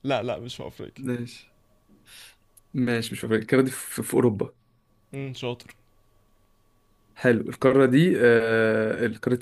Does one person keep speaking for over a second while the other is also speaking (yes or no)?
no